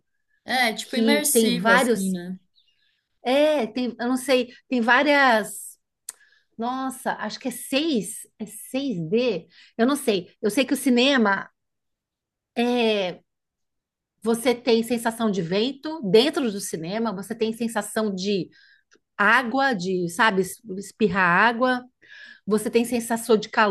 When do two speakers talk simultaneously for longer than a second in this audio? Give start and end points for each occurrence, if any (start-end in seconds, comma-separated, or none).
0.8-2.2